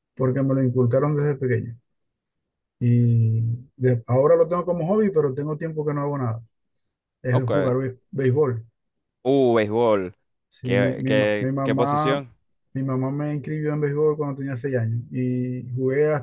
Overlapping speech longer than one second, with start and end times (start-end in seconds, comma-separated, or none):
10.6-12.2